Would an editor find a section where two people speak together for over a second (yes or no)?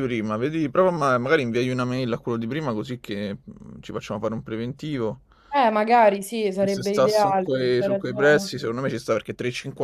yes